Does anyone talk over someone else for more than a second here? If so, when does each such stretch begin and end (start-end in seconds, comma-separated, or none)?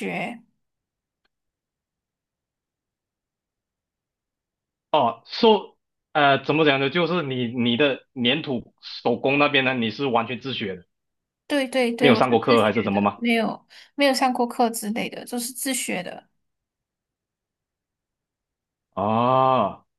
12.0-13.2